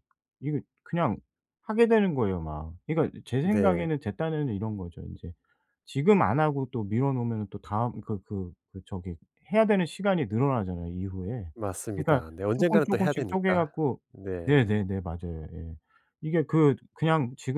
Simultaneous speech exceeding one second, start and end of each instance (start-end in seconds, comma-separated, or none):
12.0-13.7